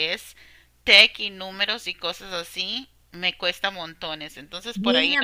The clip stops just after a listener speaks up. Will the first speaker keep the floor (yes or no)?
no